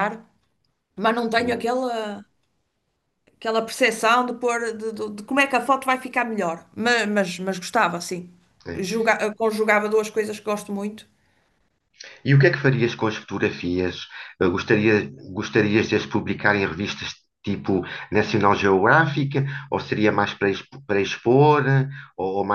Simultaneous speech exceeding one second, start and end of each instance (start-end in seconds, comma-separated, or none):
none